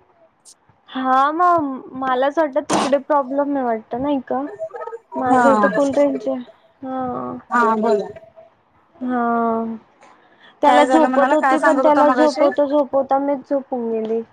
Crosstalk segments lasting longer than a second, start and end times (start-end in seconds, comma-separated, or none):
10.6-12.5